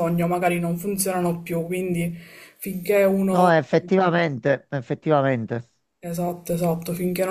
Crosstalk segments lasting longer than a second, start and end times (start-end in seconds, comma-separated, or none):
none